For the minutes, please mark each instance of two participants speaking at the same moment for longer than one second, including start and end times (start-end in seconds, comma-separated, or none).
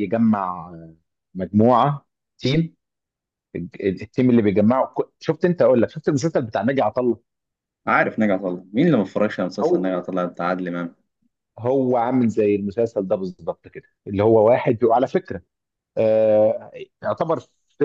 none